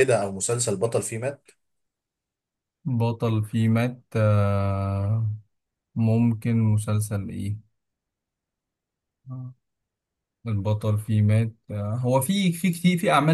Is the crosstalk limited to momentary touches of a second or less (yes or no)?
yes